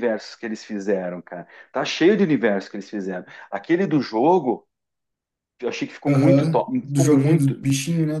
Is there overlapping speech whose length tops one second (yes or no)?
yes